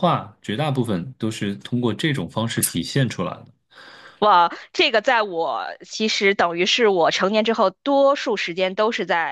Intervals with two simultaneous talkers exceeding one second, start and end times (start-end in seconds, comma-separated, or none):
none